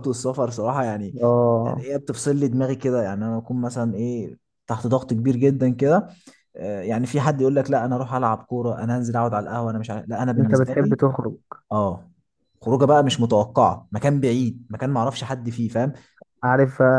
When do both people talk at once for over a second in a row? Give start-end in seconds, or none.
none